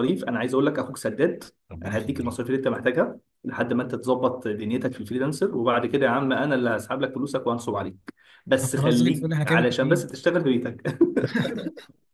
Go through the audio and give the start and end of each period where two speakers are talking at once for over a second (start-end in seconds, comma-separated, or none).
8.6-10.0